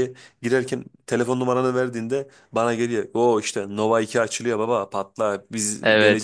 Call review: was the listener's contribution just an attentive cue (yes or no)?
no